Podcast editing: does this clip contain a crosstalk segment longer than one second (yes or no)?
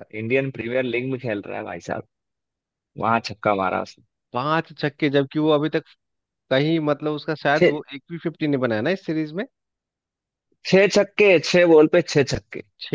no